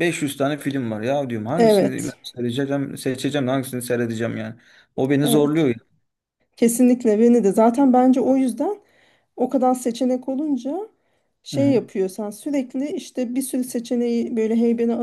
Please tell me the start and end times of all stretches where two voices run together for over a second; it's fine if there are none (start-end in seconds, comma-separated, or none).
none